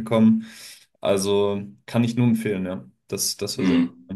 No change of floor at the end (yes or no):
no